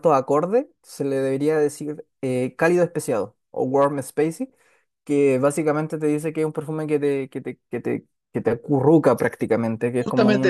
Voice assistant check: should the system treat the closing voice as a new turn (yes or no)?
yes